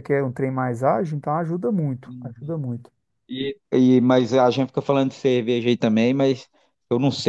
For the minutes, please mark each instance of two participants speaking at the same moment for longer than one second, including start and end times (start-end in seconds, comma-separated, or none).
none